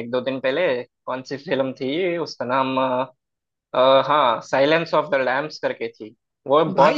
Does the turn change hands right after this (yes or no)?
yes